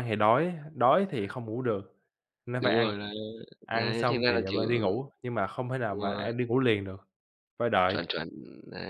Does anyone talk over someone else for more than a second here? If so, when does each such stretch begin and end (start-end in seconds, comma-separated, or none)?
3.7-5.0